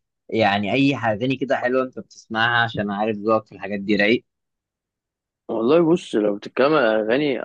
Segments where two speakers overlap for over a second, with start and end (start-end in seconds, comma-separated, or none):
none